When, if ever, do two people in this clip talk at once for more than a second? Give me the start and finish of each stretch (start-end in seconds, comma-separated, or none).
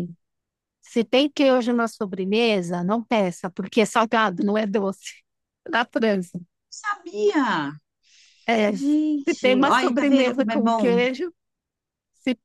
8.7-11.0